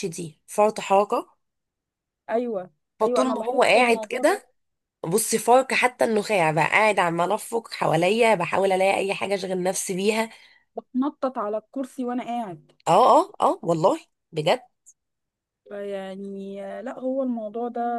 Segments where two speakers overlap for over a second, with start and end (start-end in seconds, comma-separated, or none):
3.0-4.4